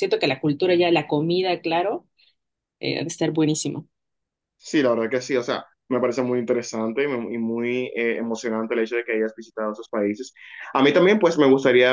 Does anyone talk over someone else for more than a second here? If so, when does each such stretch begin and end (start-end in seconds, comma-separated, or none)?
none